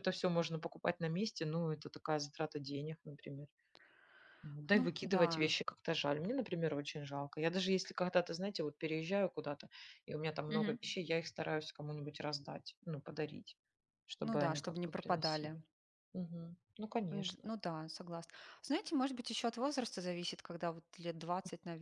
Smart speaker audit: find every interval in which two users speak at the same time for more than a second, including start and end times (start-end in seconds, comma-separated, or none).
14.2-15.6